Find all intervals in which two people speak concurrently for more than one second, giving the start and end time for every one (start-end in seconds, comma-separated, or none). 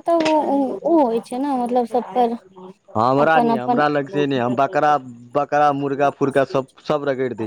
none